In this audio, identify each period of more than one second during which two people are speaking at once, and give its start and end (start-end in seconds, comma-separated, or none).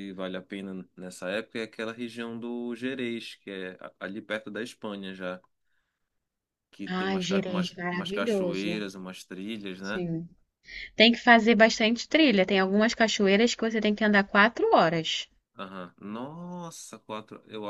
6.9-8.8